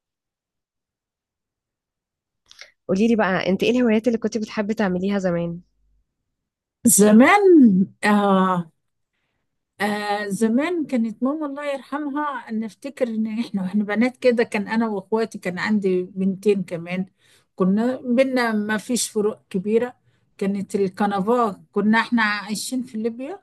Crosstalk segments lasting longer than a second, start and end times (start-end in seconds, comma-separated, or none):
none